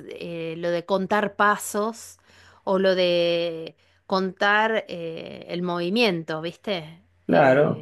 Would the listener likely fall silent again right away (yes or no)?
no